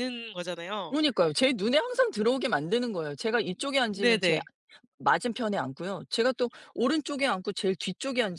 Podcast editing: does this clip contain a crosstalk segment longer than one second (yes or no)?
no